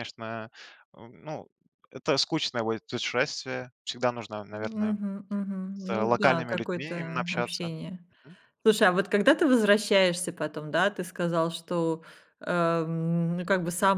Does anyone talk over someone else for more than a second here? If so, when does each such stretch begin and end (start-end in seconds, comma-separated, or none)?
5.7-7.7